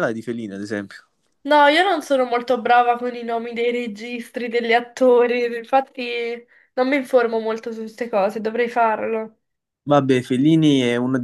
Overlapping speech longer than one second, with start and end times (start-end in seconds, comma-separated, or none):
none